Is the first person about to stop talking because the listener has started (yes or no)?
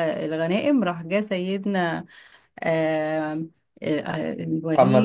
yes